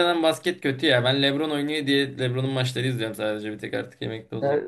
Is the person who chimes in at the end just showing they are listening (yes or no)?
no